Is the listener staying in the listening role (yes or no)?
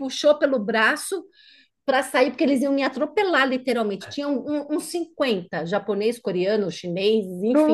yes